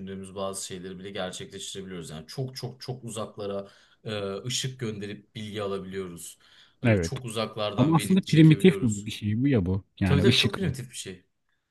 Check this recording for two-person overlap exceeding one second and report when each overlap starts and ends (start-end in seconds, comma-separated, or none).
7.8-9.1